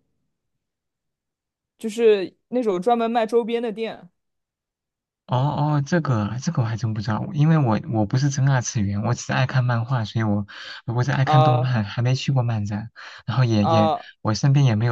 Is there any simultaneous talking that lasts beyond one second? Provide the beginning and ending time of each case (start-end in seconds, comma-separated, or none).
none